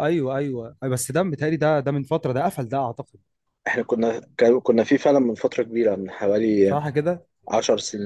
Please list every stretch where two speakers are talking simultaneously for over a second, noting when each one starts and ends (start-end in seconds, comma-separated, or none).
none